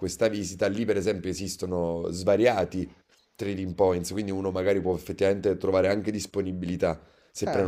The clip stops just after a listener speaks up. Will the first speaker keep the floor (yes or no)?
yes